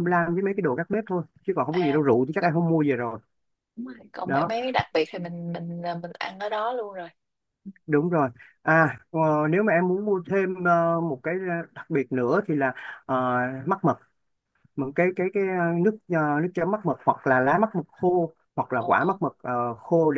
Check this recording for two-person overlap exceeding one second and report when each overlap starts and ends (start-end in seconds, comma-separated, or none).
none